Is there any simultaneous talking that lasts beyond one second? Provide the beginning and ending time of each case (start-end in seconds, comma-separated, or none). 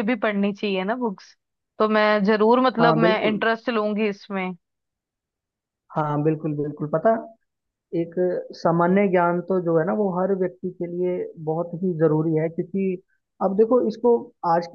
none